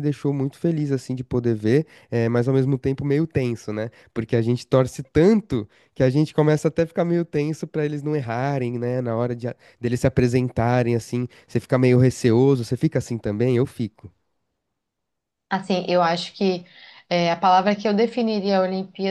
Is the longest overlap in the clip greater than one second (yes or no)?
no